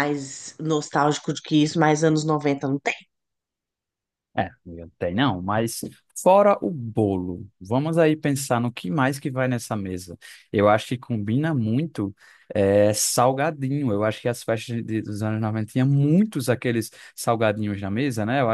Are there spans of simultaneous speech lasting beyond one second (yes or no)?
no